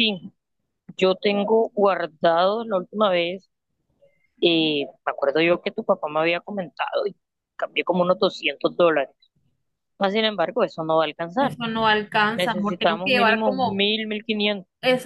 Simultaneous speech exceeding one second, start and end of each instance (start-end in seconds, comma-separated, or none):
12.3-13.8